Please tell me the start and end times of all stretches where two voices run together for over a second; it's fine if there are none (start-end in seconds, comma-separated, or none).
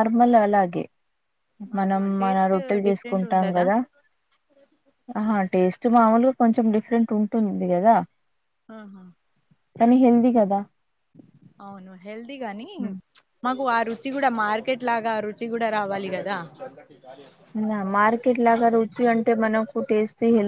1.8-3.6